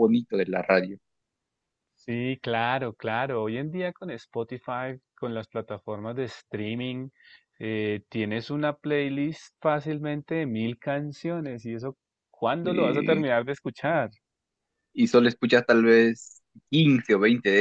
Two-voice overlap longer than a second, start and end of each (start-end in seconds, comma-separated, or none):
none